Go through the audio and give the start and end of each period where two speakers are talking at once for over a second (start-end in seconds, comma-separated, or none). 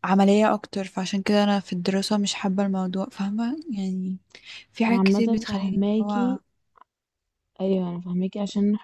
4.9-6.4